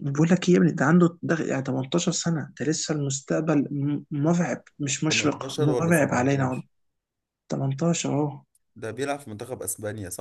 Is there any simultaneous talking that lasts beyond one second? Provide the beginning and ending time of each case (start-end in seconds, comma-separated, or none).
5.1-6.6